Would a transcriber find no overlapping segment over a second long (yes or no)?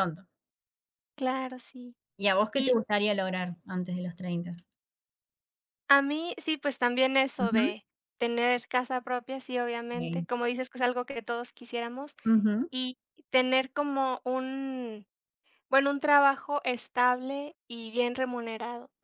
yes